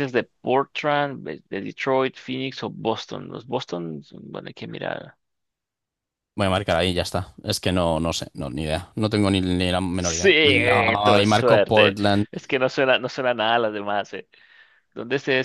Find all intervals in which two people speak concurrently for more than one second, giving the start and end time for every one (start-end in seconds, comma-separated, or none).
10.0-12.3